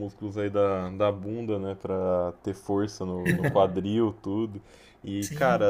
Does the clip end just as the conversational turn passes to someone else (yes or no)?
no